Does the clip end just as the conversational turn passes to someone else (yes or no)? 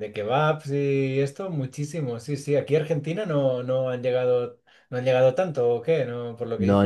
yes